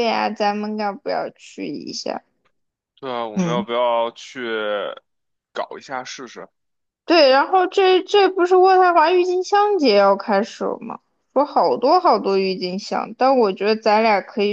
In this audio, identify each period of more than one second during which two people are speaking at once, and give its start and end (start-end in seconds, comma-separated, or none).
none